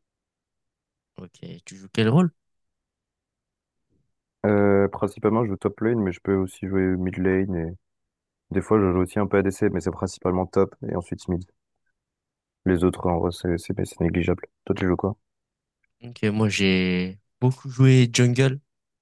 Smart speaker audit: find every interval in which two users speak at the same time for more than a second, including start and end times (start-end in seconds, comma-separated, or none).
none